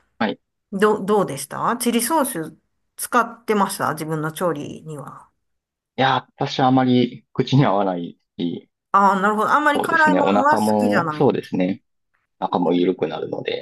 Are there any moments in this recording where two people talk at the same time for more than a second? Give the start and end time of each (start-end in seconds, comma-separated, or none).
9.7-11.8